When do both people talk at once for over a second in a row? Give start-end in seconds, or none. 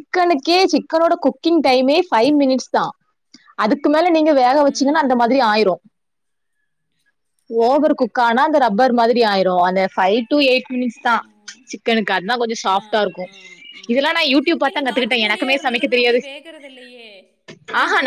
14.7-16.2